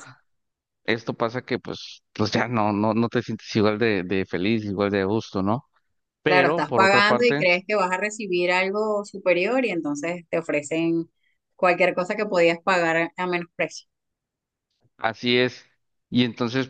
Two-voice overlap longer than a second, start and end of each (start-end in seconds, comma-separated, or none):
6.2-7.5